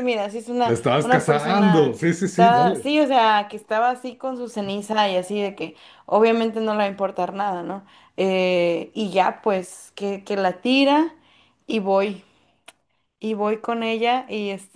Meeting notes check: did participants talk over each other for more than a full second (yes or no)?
yes